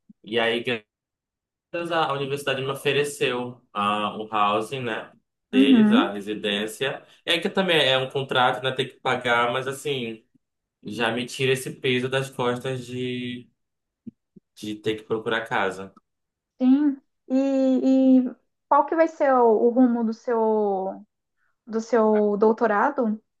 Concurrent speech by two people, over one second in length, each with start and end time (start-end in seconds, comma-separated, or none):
none